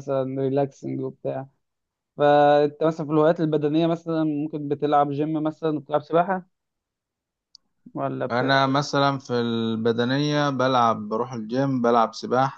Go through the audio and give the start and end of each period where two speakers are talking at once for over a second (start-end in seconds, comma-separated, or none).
none